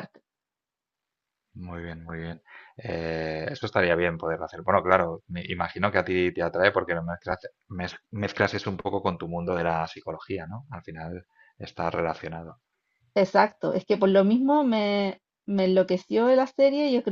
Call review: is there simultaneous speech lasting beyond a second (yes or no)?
no